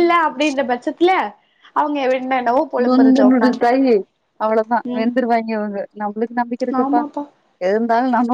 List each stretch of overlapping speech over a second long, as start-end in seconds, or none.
none